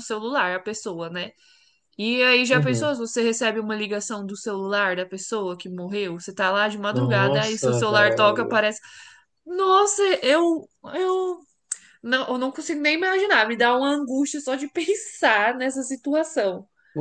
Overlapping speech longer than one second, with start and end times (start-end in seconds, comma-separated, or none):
6.9-8.4